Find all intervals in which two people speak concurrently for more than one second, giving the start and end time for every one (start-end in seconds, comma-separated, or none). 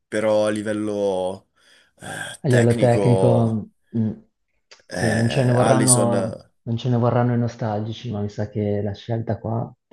2.4-3.6, 4.9-6.1